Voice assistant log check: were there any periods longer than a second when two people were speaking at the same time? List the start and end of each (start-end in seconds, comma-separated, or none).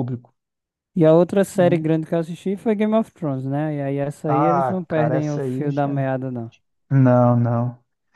4.3-6.1